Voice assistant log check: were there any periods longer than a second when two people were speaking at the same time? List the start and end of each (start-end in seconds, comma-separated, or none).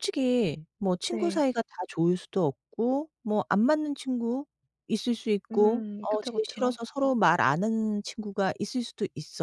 5.5-6.8